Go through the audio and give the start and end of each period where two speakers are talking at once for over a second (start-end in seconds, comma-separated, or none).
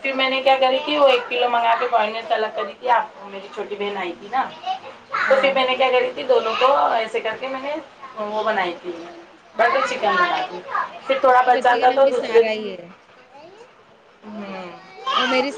11.3-12.7